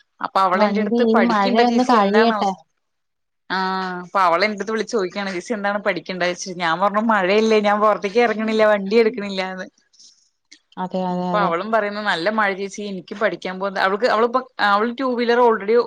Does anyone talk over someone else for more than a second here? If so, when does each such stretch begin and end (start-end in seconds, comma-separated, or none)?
0.6-2.4